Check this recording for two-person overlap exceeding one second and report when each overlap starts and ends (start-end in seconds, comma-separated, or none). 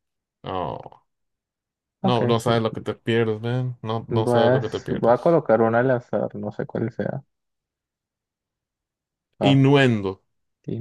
4.1-5.4